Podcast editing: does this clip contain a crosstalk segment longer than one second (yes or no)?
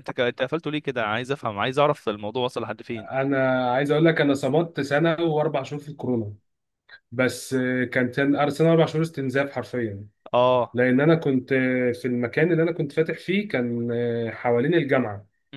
no